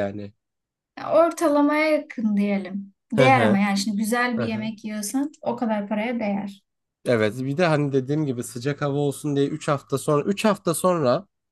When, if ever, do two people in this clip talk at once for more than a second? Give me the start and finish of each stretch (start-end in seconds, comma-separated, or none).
none